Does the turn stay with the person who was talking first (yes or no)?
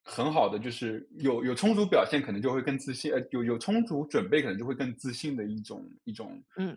no